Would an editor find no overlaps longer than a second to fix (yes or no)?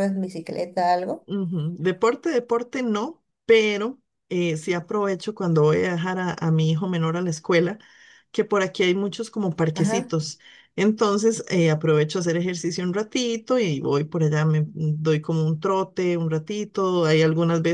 yes